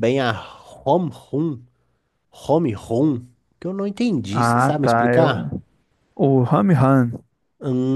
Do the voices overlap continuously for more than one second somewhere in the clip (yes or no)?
yes